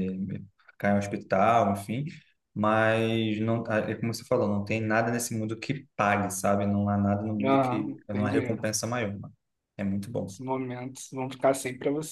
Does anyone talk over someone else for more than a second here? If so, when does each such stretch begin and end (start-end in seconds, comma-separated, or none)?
7.4-8.7